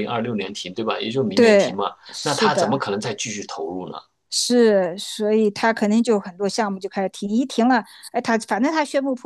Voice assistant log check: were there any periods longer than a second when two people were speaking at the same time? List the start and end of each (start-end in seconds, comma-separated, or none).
1.3-2.9